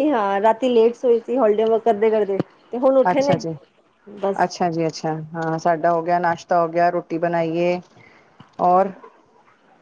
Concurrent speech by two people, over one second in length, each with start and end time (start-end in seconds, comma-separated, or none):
none